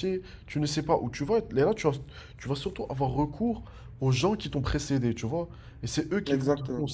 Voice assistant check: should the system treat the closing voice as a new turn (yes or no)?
no